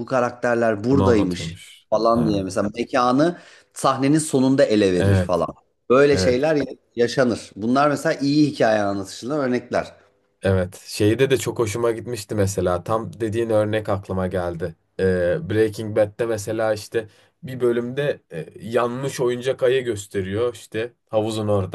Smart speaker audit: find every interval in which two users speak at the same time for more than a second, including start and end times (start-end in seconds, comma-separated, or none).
0.9-2.5